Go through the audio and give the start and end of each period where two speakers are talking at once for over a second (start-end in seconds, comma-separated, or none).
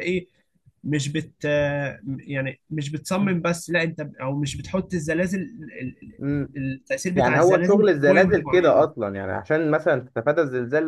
7.1-8.9